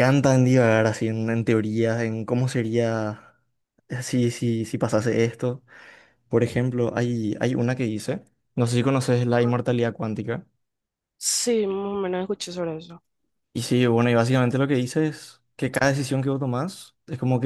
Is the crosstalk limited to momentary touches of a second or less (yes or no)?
yes